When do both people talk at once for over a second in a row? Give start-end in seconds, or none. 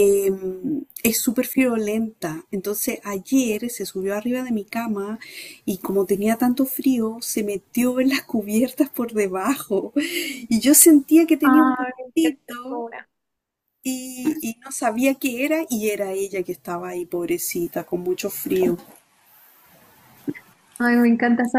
11.4-12.8